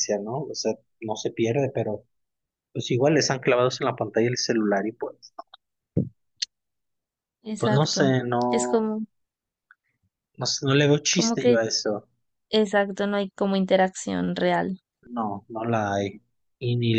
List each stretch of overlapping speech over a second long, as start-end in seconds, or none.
7.6-8.9